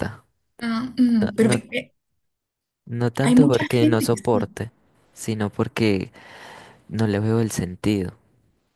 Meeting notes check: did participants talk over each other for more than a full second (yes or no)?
yes